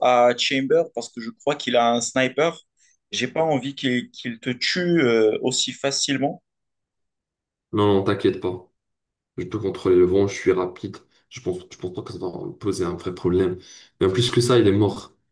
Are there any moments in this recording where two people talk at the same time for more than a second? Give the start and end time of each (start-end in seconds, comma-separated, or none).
none